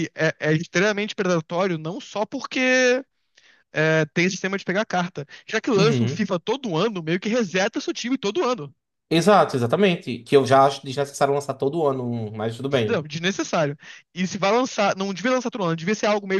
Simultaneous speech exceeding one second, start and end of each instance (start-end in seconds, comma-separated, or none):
none